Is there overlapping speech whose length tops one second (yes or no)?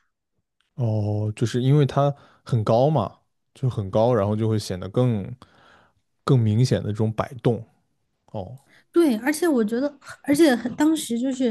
no